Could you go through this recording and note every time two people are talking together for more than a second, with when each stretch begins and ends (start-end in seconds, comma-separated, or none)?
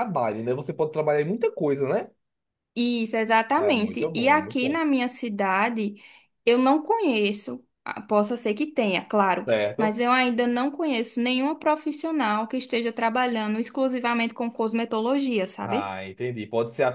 3.6-4.8